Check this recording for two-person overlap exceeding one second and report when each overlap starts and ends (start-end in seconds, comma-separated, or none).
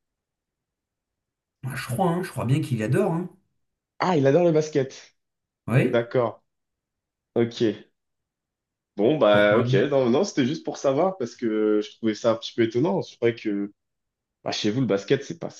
none